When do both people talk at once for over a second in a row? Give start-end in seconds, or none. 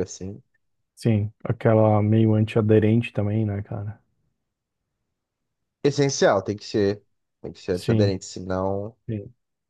none